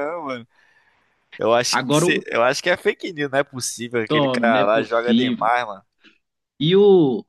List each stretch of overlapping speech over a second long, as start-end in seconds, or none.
4.1-5.5